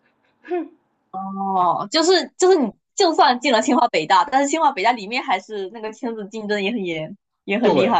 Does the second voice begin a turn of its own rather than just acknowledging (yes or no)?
yes